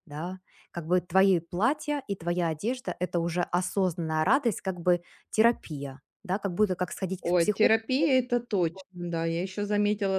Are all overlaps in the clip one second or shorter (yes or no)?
yes